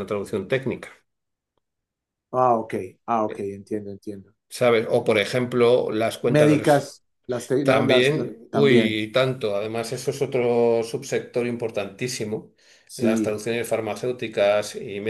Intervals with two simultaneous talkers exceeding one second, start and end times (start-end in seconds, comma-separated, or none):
7.6-9.0